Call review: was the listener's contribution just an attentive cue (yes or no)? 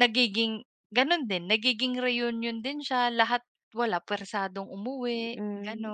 no